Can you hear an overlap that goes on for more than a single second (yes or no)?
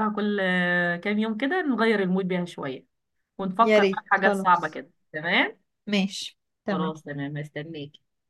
yes